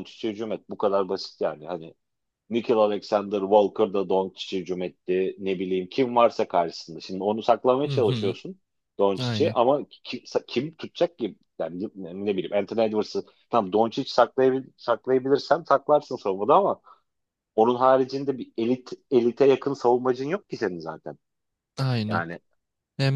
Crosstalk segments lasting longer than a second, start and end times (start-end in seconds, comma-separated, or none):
none